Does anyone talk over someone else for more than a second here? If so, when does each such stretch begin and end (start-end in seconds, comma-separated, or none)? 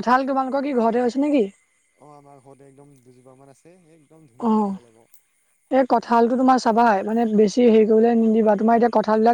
none